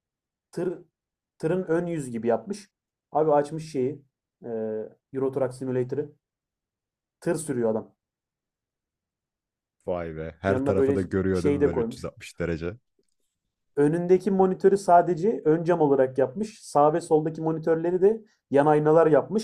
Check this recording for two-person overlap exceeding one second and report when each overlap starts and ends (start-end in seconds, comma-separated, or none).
10.5-12.1